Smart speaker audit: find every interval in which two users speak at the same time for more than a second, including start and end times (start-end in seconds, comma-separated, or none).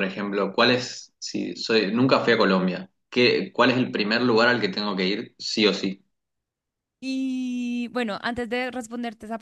none